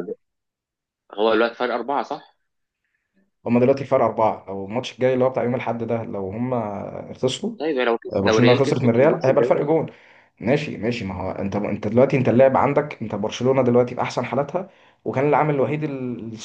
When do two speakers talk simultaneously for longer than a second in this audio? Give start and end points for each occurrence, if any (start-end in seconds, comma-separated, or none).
8.1-9.5